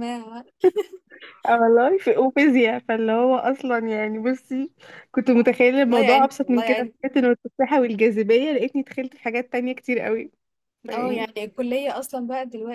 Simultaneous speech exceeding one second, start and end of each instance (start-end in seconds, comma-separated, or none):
5.3-6.9